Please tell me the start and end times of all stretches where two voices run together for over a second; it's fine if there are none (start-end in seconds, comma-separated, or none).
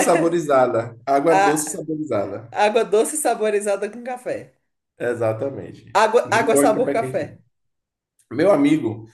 5.9-7.3